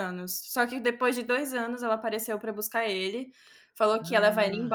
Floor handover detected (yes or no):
no